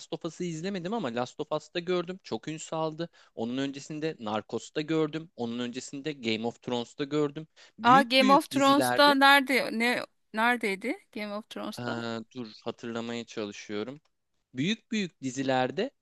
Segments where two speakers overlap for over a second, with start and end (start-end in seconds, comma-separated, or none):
7.9-9.2